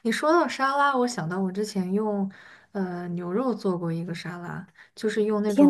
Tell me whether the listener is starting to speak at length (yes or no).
yes